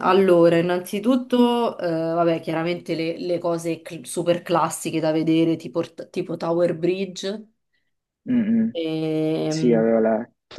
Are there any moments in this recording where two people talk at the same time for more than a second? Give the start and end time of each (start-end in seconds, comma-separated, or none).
none